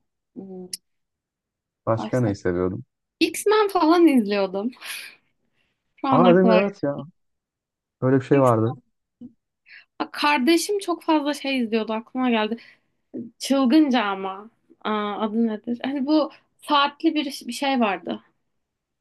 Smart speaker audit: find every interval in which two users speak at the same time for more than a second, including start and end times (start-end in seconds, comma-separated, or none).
none